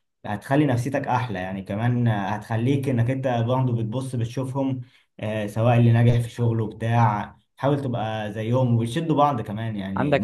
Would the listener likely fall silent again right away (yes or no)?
yes